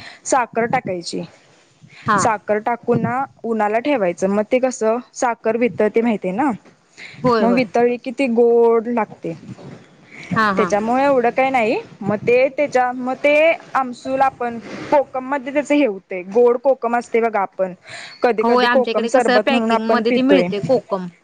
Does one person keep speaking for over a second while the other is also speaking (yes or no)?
yes